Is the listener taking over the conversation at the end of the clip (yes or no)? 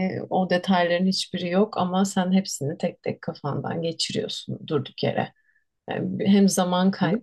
no